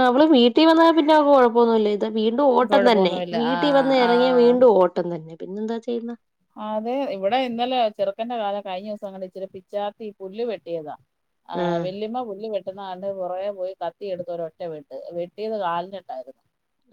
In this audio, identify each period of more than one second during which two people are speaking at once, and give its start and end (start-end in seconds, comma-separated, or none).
2.7-4.6